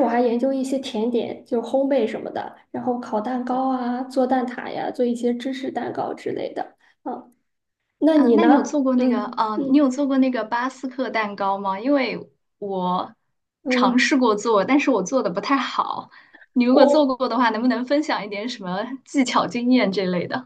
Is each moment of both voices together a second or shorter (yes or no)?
no